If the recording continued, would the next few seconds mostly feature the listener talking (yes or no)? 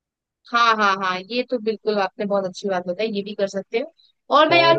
no